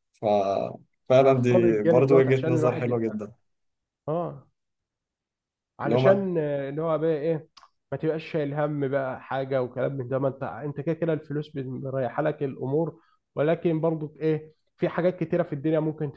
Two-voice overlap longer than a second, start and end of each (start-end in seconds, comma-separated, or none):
1.2-3.2